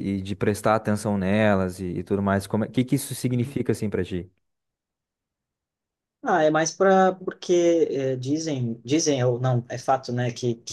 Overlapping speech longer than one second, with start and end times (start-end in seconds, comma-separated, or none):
none